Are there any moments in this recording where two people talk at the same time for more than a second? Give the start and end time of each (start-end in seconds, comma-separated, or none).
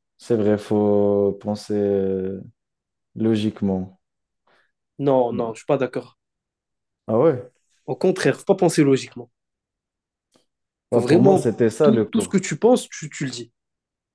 10.9-12.4